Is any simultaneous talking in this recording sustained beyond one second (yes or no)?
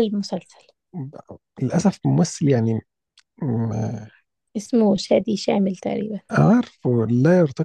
no